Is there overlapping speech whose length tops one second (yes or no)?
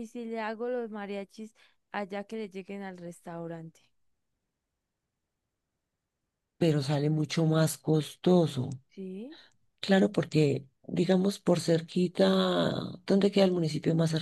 no